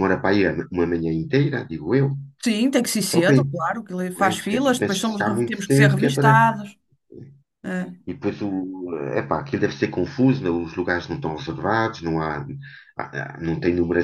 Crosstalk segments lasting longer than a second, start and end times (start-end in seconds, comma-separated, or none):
4.2-6.4